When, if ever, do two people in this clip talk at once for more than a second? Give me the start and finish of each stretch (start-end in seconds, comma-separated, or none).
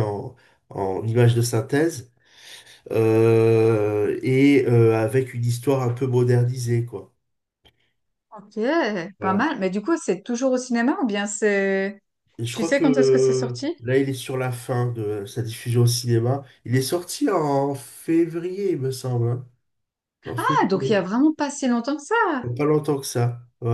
12.5-13.7